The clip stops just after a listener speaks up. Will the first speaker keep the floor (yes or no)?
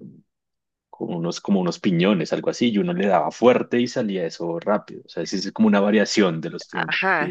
no